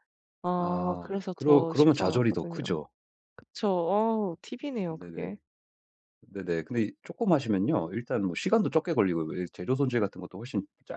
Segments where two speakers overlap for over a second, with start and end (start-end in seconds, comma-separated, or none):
0.6-2.6